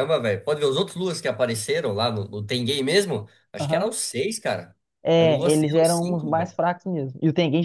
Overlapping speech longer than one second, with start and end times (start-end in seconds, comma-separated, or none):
5.2-6.5